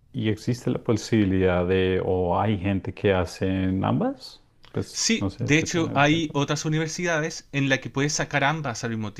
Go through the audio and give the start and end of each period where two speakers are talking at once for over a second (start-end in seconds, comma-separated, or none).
4.9-6.3